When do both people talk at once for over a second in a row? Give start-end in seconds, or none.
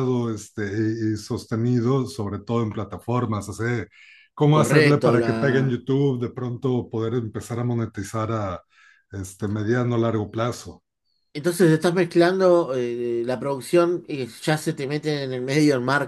4.5-5.8